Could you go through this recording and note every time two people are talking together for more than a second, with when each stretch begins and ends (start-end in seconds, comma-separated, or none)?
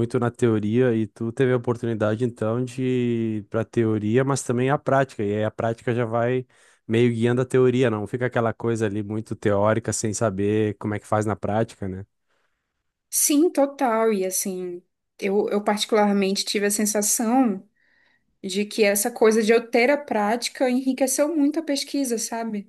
none